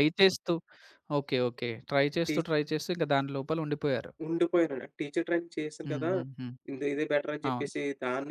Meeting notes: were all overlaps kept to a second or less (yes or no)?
yes